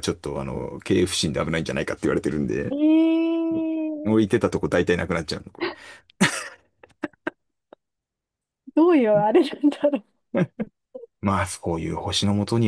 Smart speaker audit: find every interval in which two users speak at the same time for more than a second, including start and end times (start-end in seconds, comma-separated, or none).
none